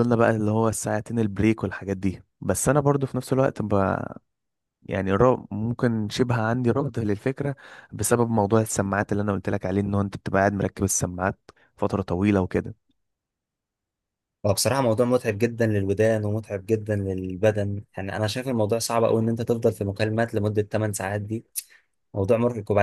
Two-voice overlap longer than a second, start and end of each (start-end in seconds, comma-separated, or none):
none